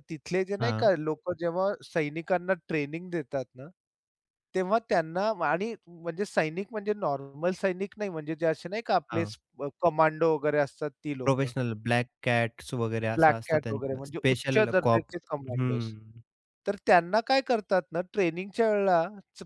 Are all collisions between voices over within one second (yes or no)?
no